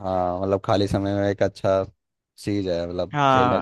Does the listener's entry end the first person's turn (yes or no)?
yes